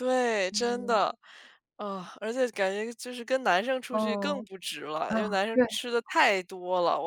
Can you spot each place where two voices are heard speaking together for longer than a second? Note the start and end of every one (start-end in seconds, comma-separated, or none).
none